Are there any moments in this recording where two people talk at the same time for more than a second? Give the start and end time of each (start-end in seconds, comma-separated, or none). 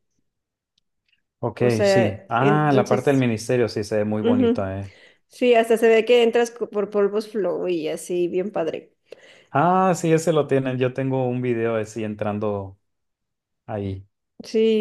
1.6-3.3